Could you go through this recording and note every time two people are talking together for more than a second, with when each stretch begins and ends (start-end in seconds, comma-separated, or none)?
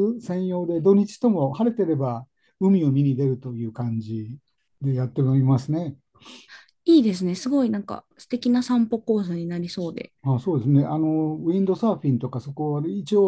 none